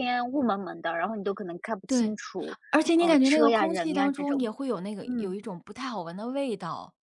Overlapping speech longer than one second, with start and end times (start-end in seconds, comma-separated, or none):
3.0-4.4